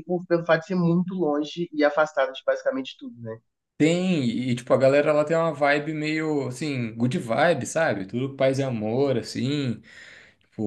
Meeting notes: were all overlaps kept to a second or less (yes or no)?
yes